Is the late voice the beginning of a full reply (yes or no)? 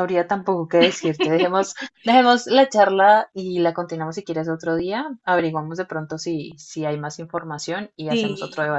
yes